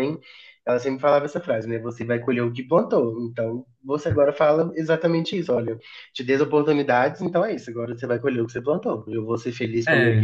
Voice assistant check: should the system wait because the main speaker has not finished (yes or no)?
yes